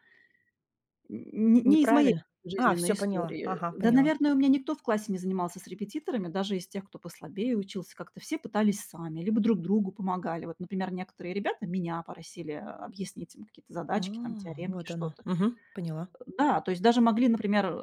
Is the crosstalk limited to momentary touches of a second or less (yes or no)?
no